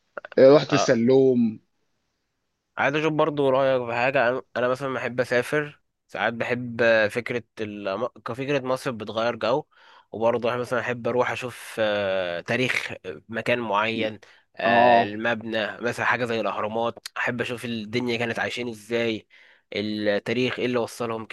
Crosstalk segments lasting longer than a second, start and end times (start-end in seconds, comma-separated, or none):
none